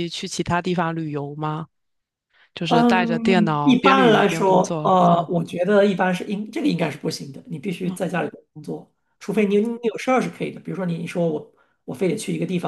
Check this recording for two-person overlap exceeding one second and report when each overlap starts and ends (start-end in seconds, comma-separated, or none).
2.7-5.3